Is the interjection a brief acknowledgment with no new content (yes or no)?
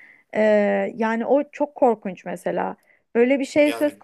yes